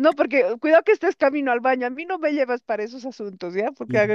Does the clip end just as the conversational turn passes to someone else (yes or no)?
no